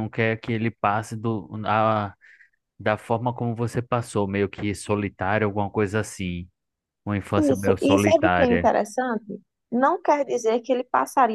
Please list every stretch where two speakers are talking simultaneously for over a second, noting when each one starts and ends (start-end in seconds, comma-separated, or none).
7.4-8.7